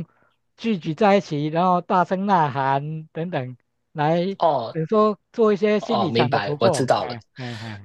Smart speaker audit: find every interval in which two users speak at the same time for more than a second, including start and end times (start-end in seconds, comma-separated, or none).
5.8-7.2